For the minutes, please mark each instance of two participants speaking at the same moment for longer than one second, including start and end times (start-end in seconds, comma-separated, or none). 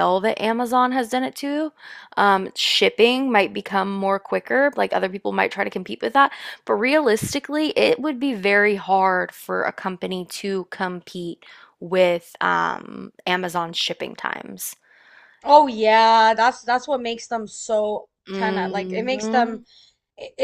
18.3-19.6